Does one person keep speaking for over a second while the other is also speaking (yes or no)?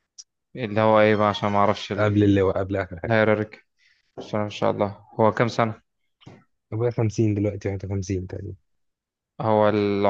no